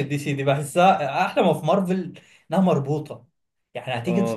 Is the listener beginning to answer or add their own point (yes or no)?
no